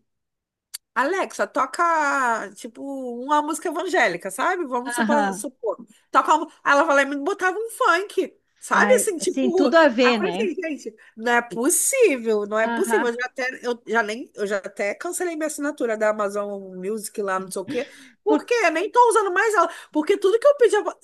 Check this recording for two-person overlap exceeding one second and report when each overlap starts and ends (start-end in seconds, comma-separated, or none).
8.7-10.5